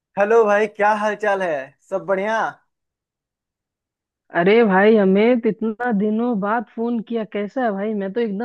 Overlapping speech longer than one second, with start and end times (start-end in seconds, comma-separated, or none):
none